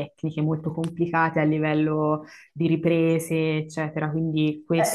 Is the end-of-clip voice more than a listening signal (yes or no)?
yes